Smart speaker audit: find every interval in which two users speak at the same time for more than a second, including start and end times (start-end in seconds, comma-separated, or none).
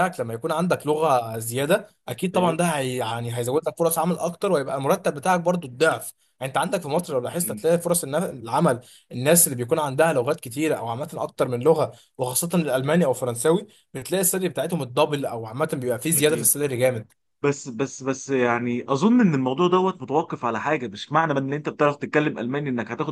none